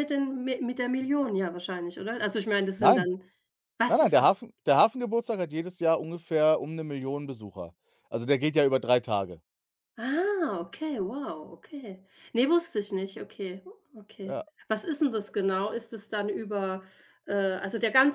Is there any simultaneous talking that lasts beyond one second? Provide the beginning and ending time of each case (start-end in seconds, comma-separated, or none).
none